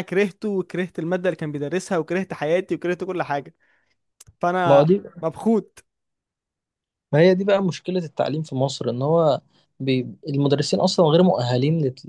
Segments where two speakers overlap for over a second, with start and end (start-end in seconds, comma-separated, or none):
none